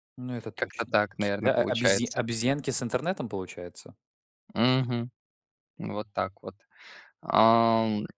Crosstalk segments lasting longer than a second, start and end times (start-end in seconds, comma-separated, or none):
0.6-2.2